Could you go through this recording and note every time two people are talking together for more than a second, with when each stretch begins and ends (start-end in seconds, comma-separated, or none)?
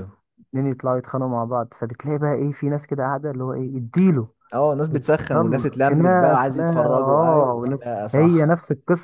5.3-8.4